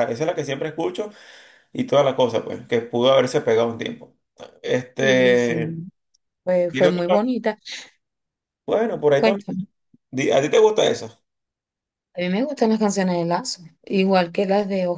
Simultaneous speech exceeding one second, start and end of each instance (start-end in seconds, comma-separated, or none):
none